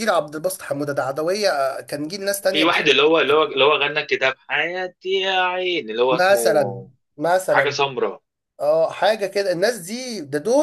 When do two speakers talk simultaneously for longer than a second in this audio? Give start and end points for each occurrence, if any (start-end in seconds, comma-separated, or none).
none